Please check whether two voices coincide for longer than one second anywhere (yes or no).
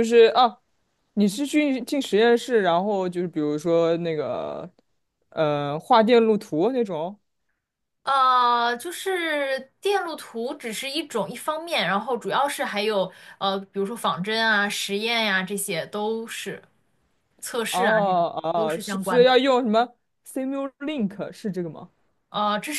yes